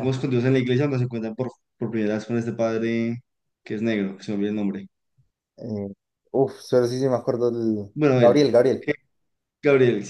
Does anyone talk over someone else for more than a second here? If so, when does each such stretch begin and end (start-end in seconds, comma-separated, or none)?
none